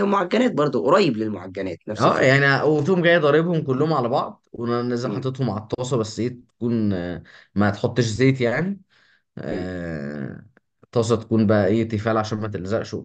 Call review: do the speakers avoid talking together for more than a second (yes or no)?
yes